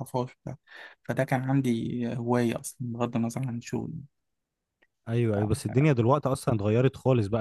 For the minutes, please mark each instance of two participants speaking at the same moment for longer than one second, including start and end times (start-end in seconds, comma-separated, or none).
none